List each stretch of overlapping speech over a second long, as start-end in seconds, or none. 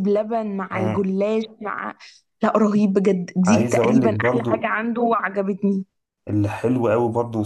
3.4-4.7